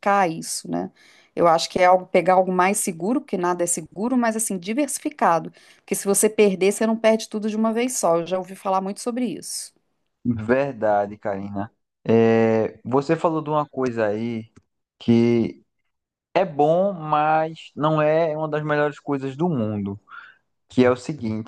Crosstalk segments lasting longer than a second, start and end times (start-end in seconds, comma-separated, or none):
none